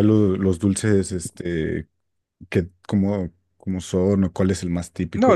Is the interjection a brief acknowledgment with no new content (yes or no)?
no